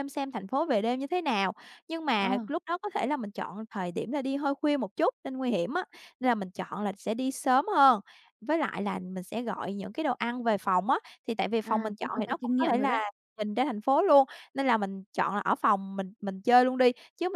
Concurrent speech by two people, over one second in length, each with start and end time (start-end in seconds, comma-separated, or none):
11.6-13.0